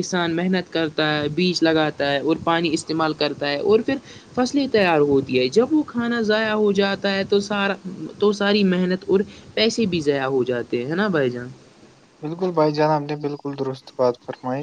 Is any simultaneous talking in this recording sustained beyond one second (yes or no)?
no